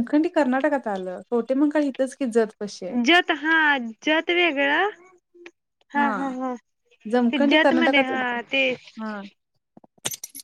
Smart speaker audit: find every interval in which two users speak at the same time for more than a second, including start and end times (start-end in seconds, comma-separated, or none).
7.1-8.4